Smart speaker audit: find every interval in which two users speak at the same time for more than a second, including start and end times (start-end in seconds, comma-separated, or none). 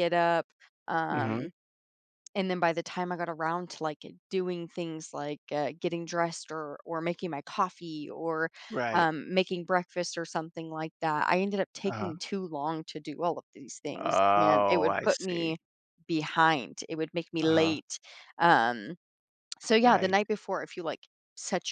13.9-15.6